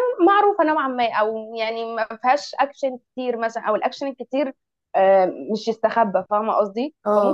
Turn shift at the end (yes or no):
no